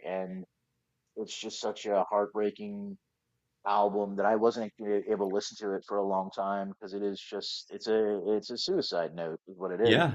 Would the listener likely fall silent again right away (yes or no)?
yes